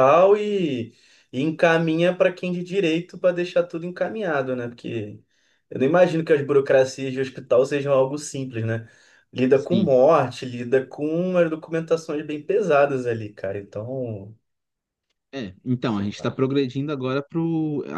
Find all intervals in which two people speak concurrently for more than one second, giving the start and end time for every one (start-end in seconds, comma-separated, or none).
none